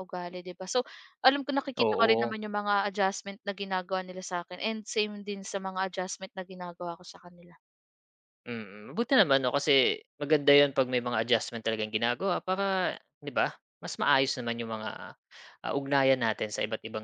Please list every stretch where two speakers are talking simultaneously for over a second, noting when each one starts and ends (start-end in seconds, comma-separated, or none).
none